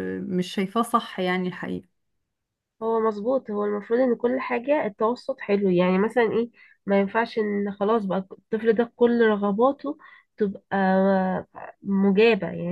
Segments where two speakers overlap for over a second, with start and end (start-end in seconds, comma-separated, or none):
none